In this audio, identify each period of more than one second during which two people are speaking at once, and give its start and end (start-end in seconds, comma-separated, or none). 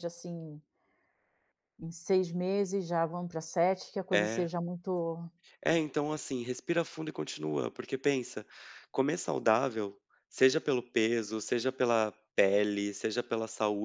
none